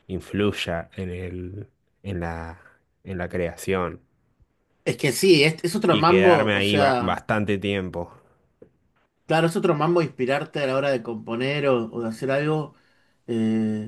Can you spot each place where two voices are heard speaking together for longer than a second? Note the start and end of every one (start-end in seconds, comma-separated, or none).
5.8-7.2